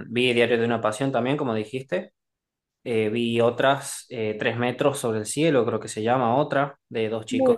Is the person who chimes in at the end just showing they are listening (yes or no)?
yes